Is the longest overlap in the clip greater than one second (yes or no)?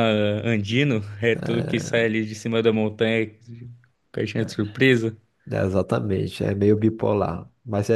no